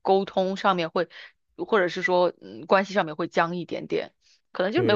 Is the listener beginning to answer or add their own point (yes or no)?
yes